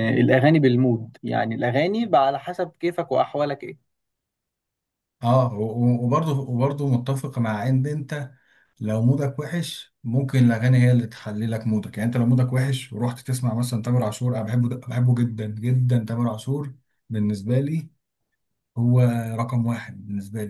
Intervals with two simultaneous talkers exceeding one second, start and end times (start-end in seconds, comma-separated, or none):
none